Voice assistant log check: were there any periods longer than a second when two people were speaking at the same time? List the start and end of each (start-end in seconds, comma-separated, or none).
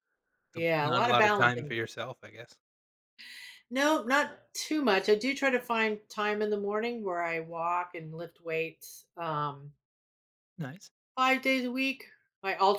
0.5-1.8